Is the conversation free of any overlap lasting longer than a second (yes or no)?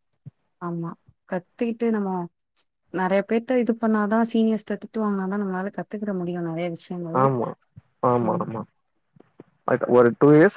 yes